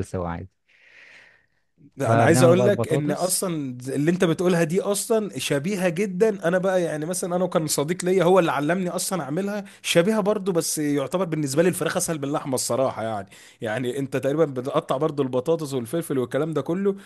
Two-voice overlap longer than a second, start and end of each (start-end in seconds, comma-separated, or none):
2.0-3.5